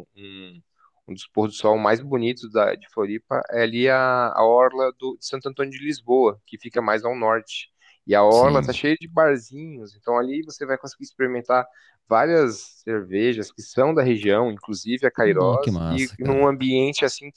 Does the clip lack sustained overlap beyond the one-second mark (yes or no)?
no